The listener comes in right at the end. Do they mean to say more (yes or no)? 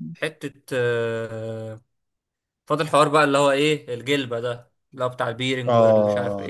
yes